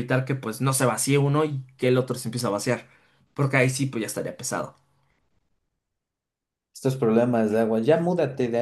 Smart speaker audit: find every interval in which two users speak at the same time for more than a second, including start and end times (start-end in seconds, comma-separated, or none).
none